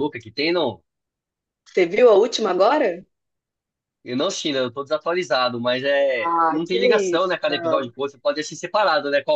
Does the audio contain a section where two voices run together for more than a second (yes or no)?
yes